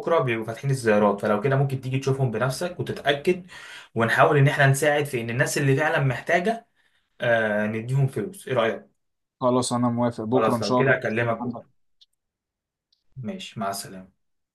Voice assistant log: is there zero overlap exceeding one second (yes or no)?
no